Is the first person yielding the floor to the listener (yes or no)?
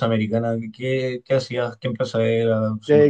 yes